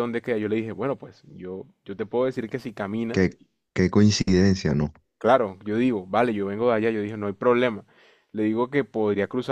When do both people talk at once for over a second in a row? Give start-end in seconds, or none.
none